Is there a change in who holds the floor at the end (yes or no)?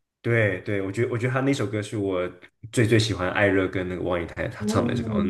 no